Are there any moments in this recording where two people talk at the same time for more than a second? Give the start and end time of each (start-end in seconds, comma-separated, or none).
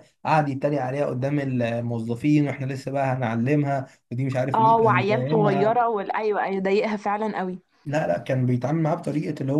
4.5-5.8